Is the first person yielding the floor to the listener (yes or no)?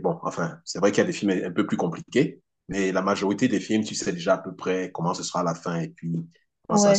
yes